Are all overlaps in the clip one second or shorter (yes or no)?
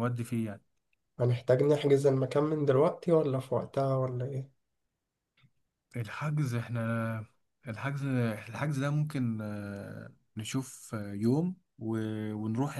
yes